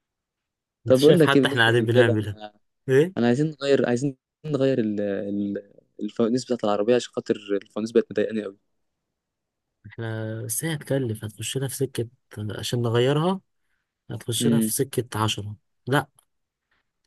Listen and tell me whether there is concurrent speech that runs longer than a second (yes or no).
yes